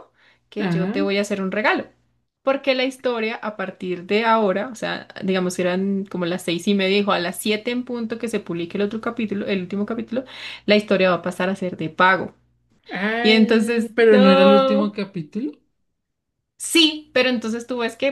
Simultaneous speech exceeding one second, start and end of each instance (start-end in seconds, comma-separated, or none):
13.2-14.9